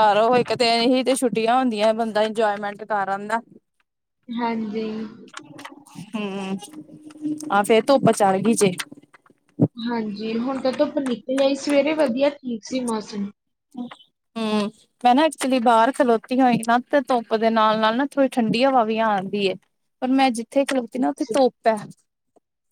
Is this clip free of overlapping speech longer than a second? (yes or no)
yes